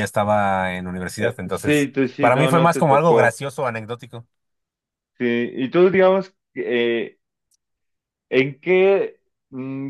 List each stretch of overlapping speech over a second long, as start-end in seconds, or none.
1.2-3.4